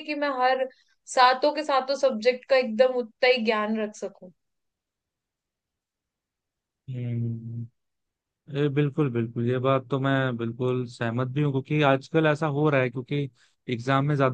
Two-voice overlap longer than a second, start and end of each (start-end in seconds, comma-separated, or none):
none